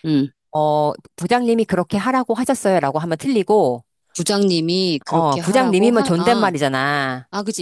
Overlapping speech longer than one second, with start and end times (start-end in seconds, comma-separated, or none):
5.1-6.5